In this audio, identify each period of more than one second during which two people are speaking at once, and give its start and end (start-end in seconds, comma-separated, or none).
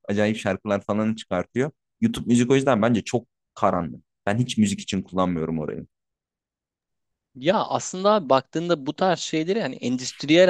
none